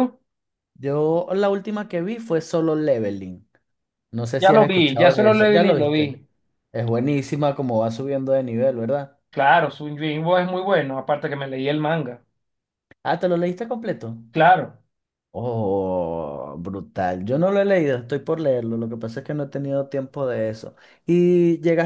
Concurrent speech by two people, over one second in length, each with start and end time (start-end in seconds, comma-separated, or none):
4.4-6.2